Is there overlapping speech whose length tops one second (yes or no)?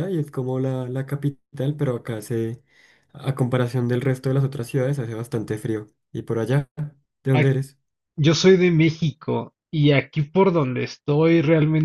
no